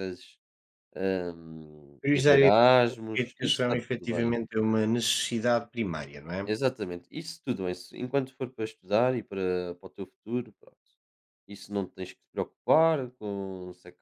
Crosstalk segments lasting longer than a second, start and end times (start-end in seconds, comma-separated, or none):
3.1-4.3